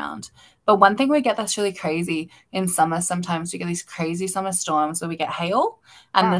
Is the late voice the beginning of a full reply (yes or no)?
no